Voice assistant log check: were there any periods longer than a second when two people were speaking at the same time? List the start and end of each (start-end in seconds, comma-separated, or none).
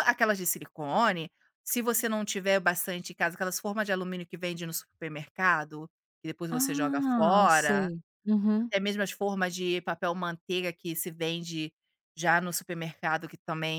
6.5-7.9